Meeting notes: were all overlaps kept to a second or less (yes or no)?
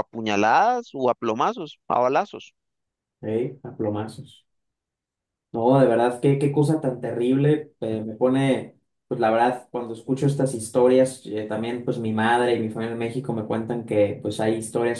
yes